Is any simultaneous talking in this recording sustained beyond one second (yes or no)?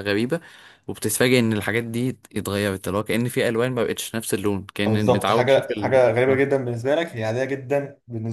yes